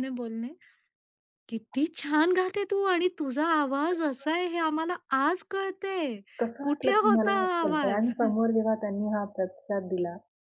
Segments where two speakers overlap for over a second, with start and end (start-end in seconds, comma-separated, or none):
6.6-8.1